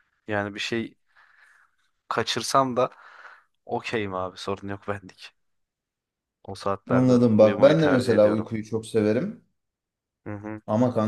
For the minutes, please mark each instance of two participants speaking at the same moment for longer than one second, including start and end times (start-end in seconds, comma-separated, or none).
6.9-8.5